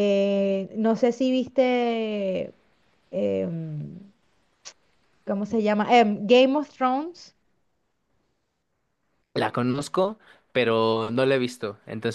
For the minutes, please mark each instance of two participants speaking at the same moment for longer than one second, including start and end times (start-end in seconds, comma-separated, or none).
none